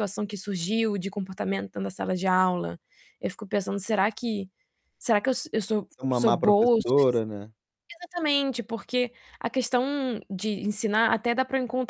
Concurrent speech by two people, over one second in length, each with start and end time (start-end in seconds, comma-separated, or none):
5.9-7.2